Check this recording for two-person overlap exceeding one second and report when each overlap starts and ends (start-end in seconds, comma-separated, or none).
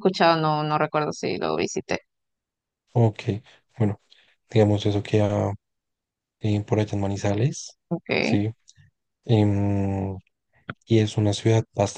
none